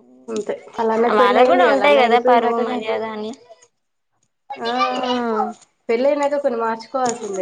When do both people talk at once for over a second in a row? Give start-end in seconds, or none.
1.2-2.8